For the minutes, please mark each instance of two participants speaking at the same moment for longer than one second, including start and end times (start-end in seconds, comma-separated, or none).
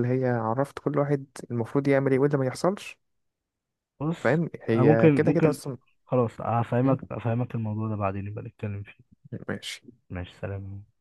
4.2-5.6